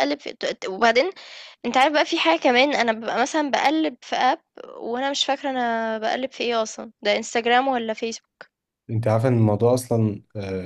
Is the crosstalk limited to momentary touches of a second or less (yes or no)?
yes